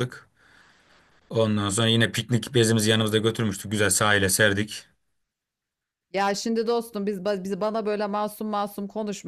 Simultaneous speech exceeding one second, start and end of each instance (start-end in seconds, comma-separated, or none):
none